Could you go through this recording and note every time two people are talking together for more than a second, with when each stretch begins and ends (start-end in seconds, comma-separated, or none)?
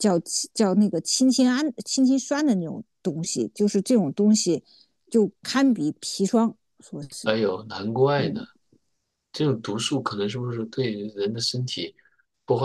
none